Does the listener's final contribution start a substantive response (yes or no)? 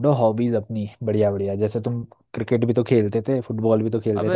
yes